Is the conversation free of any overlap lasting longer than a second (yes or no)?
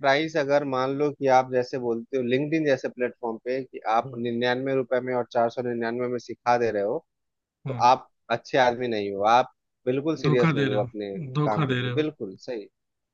no